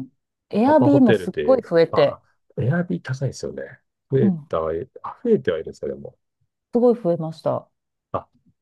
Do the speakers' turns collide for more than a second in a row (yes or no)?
yes